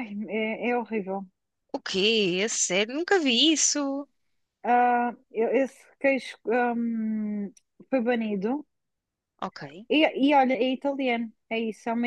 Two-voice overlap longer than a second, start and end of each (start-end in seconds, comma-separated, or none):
none